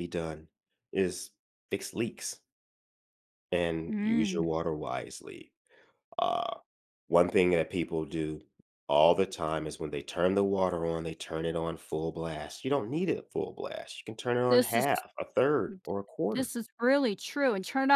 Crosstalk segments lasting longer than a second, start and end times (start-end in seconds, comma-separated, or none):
none